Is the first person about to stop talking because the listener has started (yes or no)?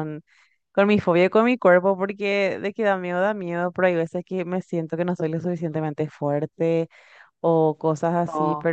no